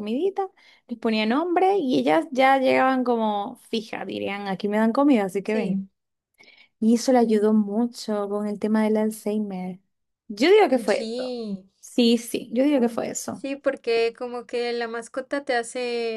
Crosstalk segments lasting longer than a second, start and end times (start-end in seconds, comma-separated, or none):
none